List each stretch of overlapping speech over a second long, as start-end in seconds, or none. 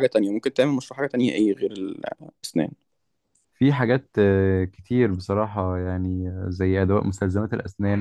none